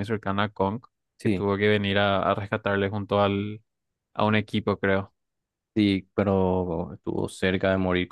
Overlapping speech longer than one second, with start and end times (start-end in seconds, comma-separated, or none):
none